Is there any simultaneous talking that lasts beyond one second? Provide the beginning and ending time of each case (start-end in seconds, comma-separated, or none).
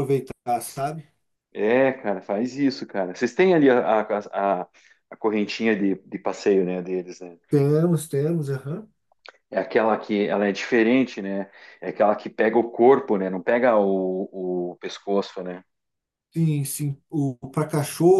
none